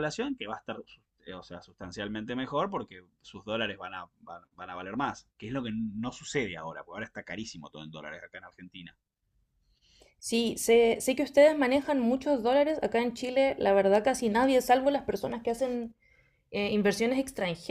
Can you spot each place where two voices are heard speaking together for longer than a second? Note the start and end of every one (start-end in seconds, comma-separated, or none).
none